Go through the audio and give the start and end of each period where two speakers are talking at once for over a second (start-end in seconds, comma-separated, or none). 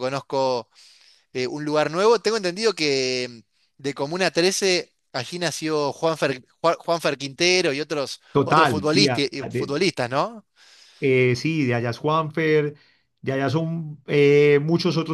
8.3-9.9